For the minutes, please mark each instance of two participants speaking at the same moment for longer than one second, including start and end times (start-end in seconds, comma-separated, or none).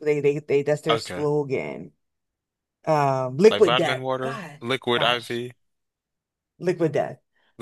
3.5-5.4